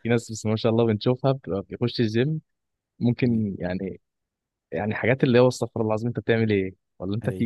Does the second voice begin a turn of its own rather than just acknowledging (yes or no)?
no